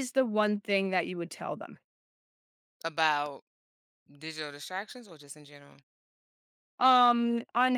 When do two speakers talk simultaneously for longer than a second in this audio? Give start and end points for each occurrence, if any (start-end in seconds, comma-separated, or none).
none